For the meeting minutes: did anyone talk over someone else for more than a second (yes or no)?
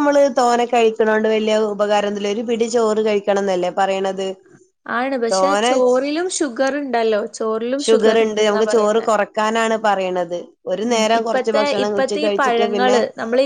yes